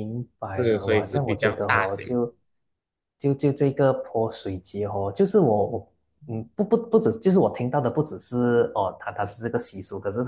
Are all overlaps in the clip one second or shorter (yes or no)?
no